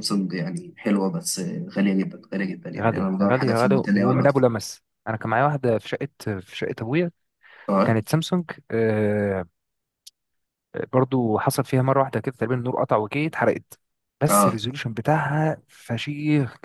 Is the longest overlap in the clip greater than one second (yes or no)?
yes